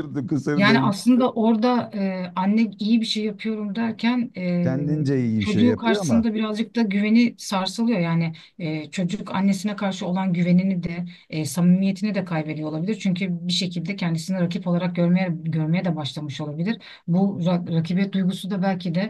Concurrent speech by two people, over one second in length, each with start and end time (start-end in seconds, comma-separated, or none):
4.6-6.2